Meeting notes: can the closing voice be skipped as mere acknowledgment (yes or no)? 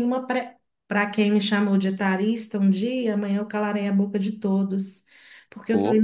yes